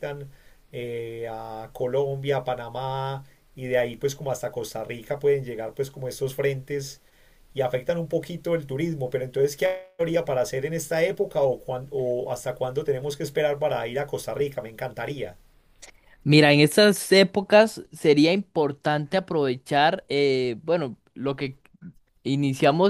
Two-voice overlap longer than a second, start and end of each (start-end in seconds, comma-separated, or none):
none